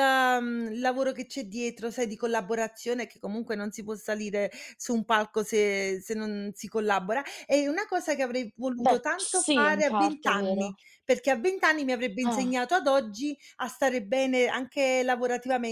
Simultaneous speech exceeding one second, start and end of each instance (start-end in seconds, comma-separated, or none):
8.8-10.7